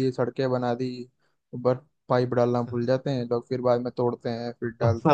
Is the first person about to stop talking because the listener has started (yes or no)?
yes